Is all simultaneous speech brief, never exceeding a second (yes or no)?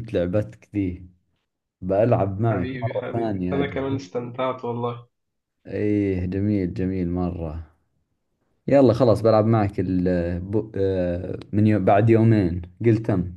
no